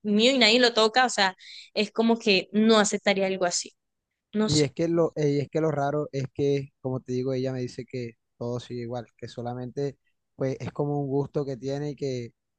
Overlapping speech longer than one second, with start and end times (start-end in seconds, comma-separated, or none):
none